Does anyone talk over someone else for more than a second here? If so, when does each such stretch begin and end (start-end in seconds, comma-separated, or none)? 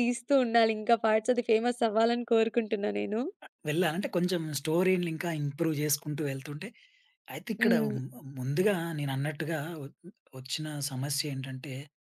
none